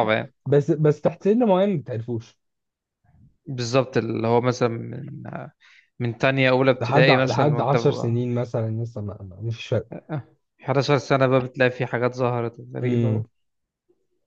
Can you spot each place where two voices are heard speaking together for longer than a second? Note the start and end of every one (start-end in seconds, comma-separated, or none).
6.7-8.1